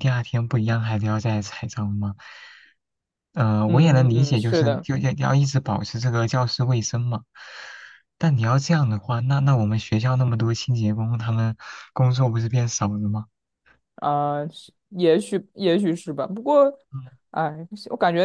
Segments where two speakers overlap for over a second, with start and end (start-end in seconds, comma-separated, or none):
3.6-4.8